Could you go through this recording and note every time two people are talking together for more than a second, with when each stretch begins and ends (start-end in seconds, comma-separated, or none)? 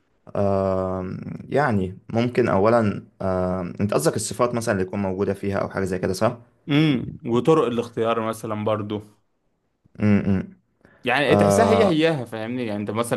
none